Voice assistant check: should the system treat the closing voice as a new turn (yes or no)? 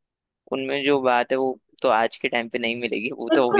yes